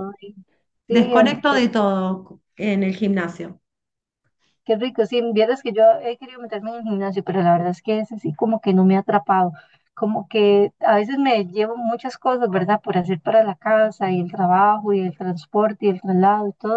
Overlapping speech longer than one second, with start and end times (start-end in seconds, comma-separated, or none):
none